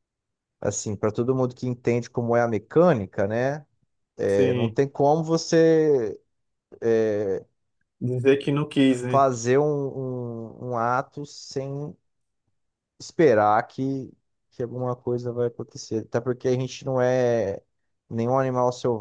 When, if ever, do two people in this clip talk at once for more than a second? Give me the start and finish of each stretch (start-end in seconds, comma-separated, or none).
none